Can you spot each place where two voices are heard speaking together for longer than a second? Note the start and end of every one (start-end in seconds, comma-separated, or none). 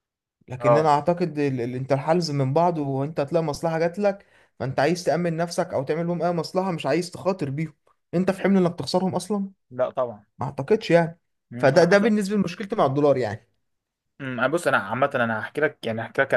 none